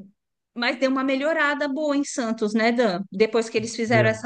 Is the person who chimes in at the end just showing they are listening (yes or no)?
yes